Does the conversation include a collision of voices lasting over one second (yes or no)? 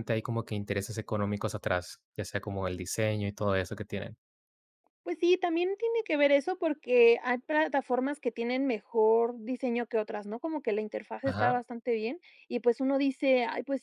no